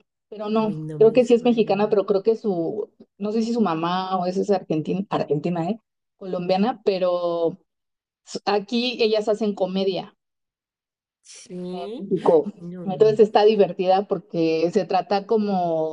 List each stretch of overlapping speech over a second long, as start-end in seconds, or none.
0.6-2.0